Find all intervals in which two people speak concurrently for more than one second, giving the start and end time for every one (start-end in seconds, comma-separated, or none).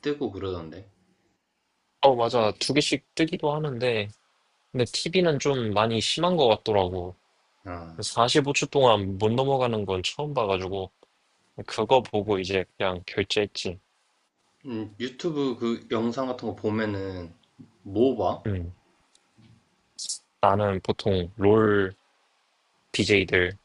none